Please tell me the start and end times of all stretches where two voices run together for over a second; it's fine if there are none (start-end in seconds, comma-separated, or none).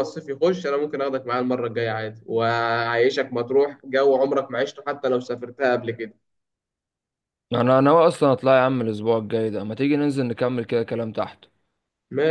none